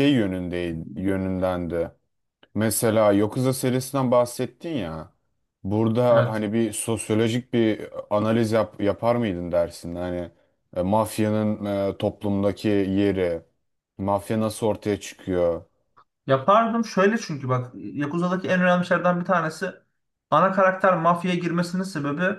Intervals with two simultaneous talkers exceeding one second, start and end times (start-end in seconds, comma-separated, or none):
none